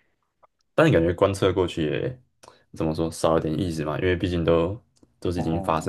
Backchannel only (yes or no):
yes